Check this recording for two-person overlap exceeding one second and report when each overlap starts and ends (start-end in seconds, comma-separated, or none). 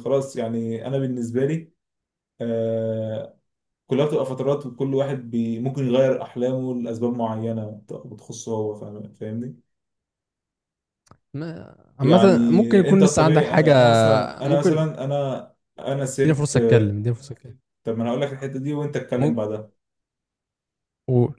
12.0-13.7